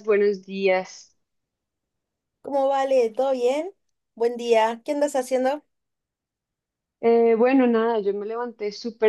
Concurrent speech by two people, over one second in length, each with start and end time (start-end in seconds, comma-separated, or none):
none